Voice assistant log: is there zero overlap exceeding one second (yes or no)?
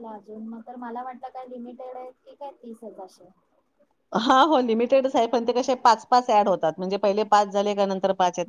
yes